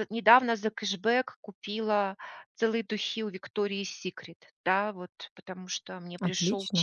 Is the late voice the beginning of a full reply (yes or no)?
no